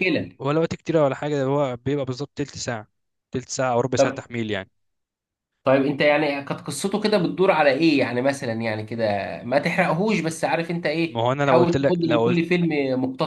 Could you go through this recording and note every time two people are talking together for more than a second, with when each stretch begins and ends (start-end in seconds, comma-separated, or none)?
11.1-12.4